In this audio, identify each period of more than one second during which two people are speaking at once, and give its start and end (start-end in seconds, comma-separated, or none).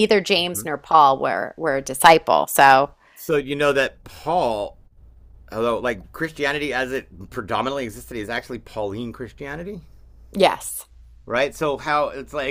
none